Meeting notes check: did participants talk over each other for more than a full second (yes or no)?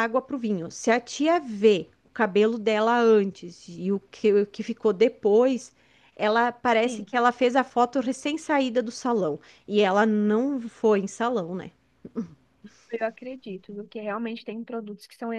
no